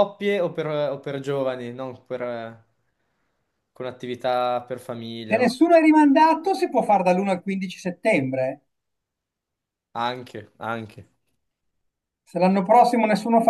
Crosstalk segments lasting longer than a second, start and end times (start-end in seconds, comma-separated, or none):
none